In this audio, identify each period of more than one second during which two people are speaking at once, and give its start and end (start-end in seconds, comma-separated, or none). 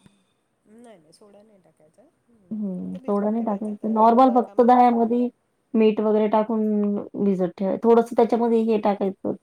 2.8-5.2